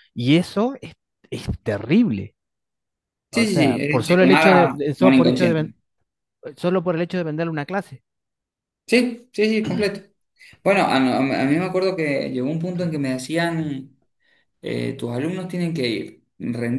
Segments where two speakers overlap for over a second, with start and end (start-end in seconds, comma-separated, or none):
3.3-5.7